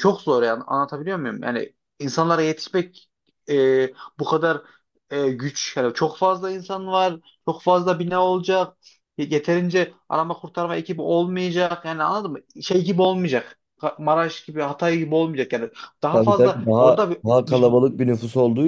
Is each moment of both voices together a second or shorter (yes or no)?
no